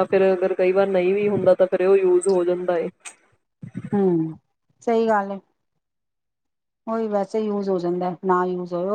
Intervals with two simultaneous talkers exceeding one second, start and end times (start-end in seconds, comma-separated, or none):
none